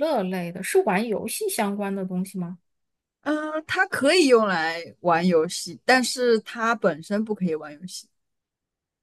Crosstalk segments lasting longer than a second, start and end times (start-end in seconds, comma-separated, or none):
none